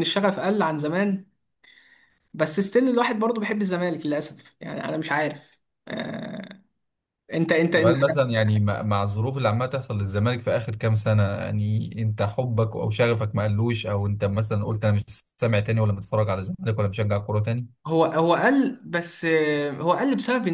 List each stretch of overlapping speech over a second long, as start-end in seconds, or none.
none